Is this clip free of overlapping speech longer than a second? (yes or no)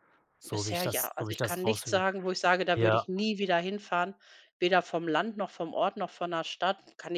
no